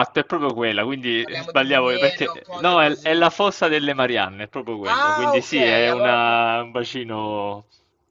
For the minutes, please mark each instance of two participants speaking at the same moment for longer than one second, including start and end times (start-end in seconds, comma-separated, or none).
1.2-3.3, 4.8-6.4